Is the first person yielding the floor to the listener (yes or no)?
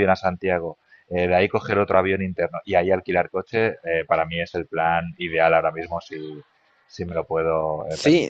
yes